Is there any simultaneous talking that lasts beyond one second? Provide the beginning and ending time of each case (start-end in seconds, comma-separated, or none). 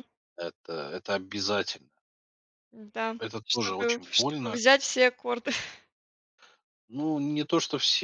3.2-4.6